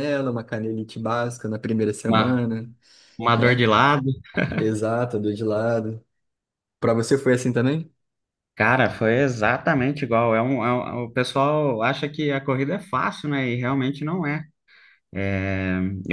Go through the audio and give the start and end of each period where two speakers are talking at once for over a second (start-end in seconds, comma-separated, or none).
none